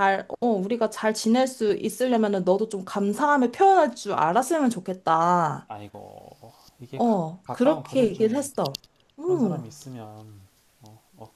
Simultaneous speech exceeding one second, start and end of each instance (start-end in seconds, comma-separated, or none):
6.9-8.4